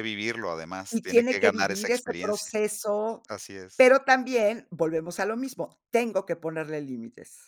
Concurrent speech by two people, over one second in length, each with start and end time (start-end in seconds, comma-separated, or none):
0.9-2.5